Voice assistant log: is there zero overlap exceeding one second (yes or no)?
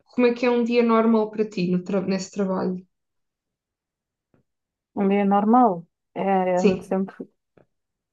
yes